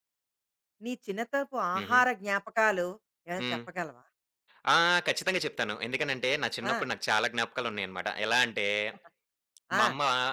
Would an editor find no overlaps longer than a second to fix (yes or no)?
yes